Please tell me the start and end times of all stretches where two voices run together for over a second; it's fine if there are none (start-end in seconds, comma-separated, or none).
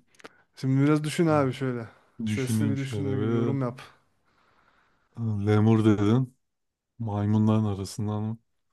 2.3-3.6